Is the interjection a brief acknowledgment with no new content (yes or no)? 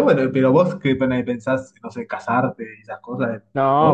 no